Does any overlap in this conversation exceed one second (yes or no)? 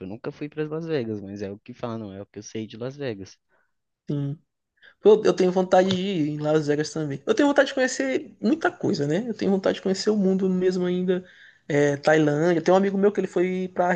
no